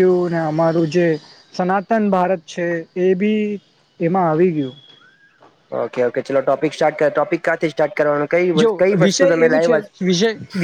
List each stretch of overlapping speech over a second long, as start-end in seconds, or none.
none